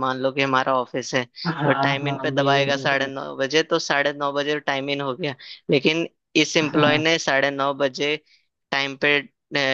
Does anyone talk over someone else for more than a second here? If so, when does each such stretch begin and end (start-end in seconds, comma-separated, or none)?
1.4-3.1